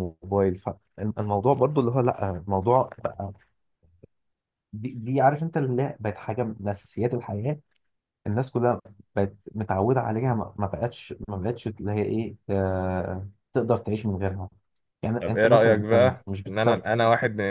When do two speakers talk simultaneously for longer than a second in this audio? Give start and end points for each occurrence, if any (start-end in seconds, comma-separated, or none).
15.2-16.8